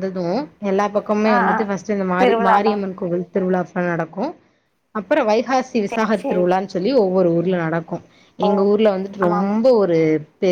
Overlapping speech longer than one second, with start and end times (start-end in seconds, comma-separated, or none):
none